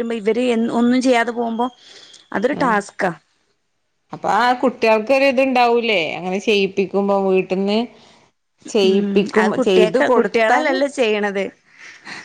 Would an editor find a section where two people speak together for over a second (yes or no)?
yes